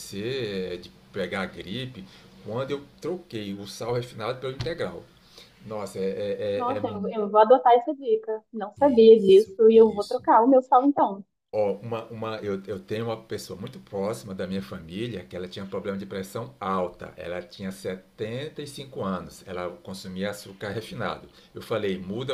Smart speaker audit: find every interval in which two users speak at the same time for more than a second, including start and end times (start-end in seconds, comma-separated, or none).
8.8-10.3